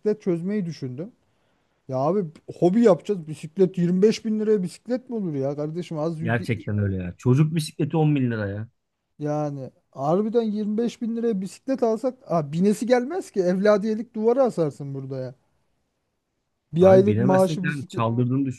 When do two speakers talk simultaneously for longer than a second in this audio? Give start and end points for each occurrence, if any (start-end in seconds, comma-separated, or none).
16.8-18.0